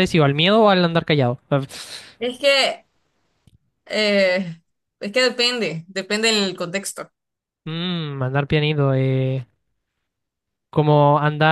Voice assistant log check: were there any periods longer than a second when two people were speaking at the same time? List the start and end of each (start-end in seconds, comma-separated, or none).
none